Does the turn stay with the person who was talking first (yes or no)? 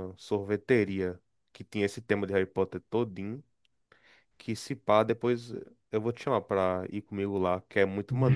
no